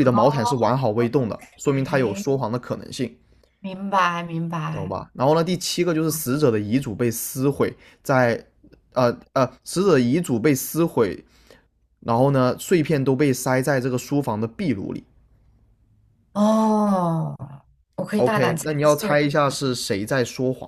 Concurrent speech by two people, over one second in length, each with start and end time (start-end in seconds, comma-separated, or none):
18.2-19.6